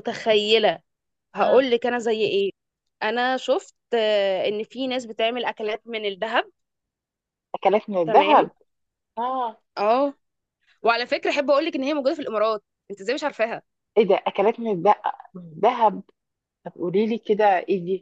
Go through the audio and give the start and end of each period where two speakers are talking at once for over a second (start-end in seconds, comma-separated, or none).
none